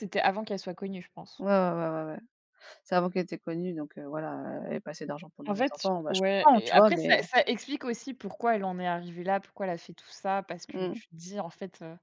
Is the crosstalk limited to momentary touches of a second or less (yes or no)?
no